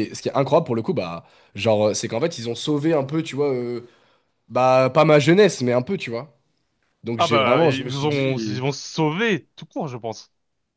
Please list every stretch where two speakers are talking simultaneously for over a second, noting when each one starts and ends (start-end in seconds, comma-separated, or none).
7.2-8.6